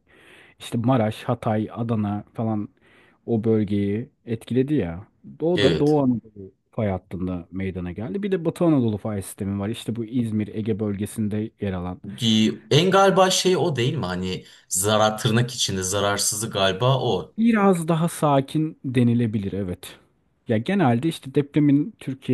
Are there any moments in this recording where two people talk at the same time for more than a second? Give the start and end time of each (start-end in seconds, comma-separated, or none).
none